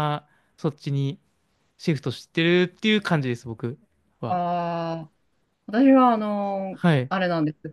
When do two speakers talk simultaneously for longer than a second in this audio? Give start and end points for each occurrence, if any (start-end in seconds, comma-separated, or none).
none